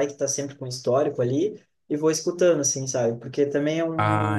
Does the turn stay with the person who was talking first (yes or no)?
yes